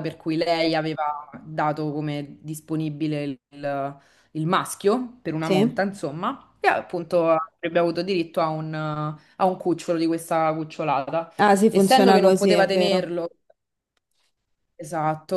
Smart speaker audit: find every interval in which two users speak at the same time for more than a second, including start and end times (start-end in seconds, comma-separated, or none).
11.7-13.1